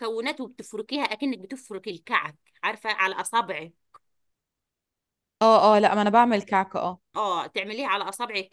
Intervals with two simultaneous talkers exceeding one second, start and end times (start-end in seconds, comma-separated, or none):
none